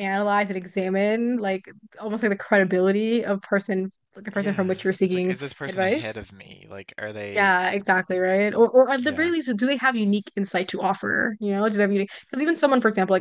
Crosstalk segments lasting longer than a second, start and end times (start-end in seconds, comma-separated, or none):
4.3-6.2